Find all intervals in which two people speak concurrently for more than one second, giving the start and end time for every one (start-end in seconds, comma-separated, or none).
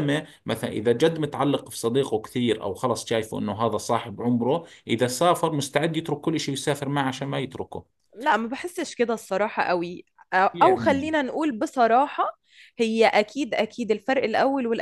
none